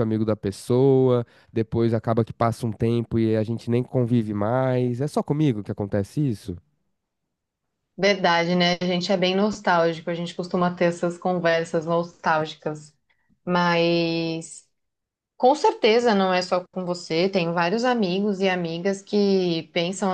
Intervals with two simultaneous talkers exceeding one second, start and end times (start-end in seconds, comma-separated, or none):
none